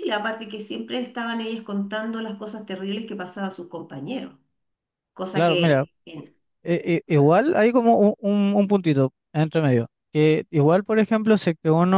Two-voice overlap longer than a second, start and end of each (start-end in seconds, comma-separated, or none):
none